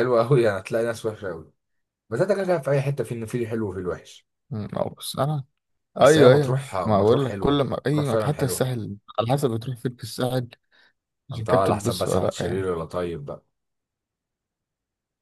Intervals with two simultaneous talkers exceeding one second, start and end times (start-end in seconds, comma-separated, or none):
6.0-8.7, 11.3-12.7